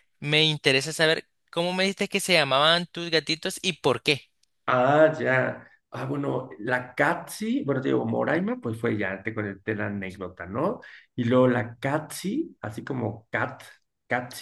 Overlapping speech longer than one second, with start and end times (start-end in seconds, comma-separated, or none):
none